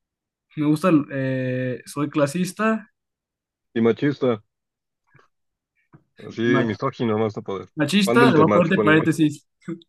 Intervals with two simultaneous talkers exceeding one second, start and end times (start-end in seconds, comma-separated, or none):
7.7-9.1